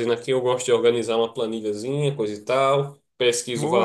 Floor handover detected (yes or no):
yes